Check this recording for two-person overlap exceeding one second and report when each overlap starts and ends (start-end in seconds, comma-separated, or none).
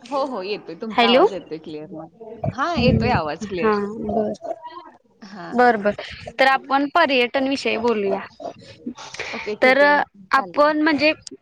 none